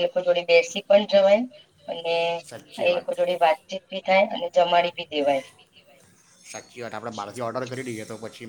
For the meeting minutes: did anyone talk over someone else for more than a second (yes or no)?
no